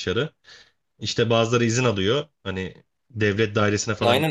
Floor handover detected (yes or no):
yes